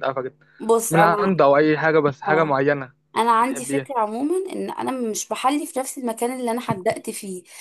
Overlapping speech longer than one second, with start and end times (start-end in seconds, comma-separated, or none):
none